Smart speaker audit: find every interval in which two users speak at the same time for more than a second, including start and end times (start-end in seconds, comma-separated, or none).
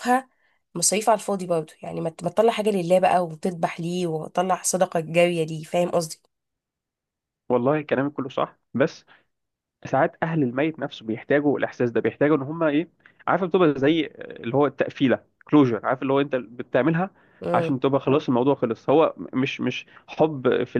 none